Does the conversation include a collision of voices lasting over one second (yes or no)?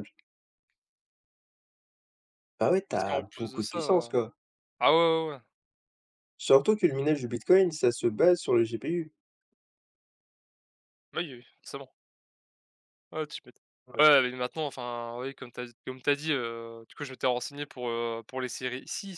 yes